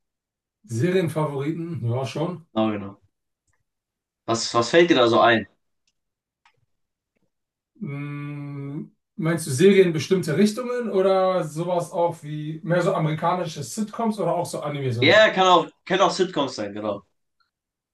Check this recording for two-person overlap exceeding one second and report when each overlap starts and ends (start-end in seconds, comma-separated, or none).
none